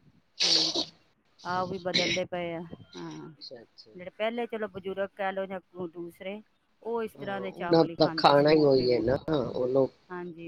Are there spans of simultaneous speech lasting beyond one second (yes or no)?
yes